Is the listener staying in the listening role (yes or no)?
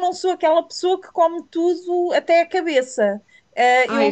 yes